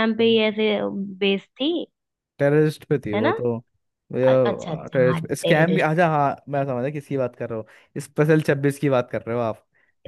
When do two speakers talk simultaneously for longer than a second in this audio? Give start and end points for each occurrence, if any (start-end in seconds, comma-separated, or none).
4.3-5.9